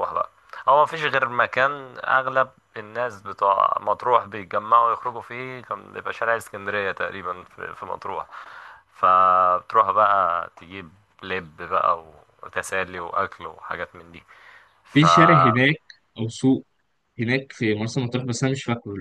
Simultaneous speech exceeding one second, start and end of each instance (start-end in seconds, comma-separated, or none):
none